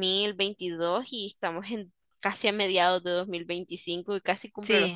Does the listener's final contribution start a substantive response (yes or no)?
yes